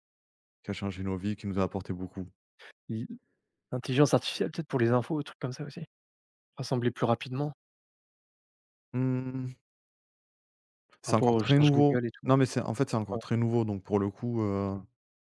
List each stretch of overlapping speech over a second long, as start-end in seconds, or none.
11.0-12.3